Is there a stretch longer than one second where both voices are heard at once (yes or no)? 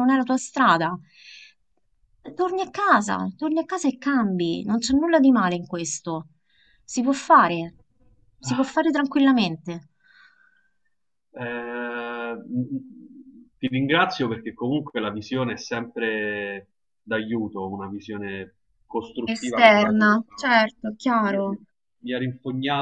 yes